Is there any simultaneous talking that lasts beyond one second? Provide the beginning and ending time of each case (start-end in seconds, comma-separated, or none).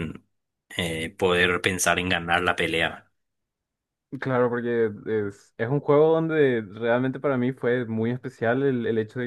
none